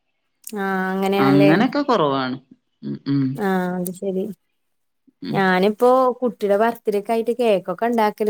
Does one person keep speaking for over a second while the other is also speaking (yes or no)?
no